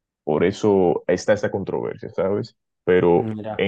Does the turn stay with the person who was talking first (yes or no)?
yes